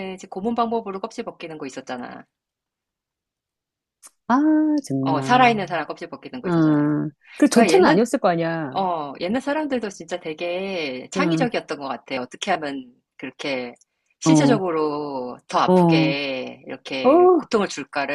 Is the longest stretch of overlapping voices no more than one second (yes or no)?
yes